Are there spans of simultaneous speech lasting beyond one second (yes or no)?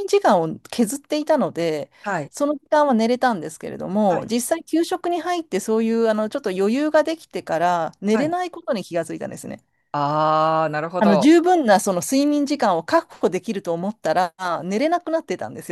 no